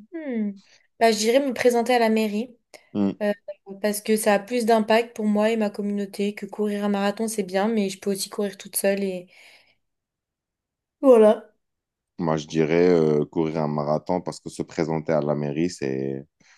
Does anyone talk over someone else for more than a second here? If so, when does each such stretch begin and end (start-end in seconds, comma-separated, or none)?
none